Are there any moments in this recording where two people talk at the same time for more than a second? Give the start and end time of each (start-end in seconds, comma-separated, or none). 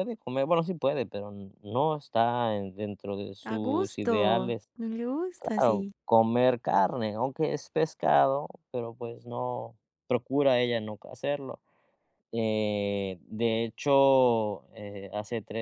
3.4-4.7